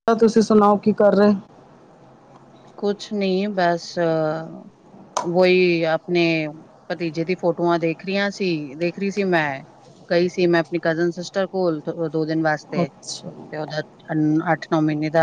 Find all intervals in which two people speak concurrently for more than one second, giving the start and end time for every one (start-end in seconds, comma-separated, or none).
none